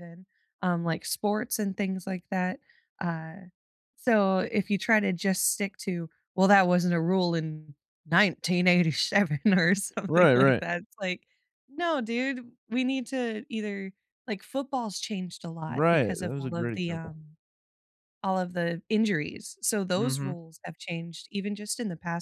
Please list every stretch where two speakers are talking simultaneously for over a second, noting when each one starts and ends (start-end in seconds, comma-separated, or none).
15.7-17.2